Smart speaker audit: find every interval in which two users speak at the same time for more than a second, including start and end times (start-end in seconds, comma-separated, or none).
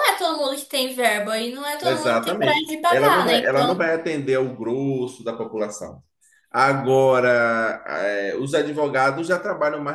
1.8-3.9